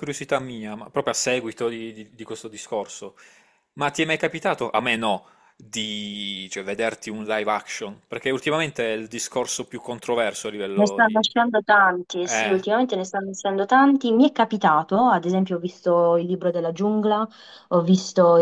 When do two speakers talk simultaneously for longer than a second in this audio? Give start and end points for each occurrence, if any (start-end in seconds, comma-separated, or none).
none